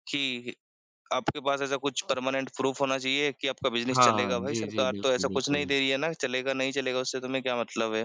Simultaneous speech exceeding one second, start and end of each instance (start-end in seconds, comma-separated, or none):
3.9-5.7